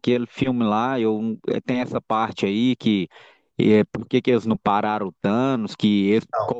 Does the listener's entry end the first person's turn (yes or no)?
no